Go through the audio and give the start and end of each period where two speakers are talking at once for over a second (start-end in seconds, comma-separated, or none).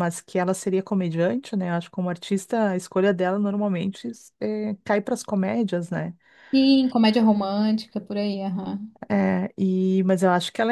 none